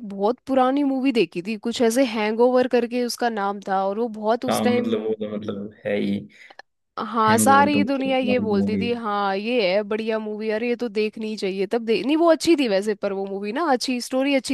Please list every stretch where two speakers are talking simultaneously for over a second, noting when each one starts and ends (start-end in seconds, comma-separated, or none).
7.3-8.9